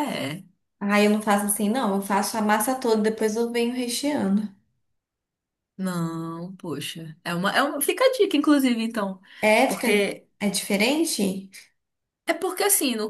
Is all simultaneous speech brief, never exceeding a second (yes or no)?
yes